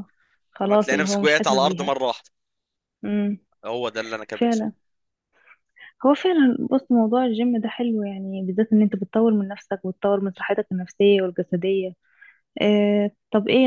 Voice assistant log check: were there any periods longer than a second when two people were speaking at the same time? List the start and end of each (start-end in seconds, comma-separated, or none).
0.6-1.9